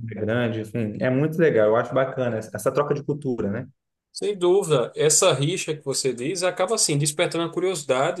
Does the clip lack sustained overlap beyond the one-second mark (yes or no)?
yes